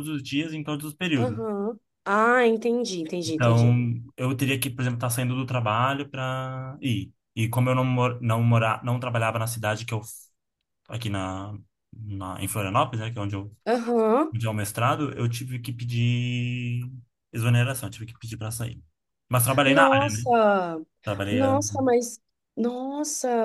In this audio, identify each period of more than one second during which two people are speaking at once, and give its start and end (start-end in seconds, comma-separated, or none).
none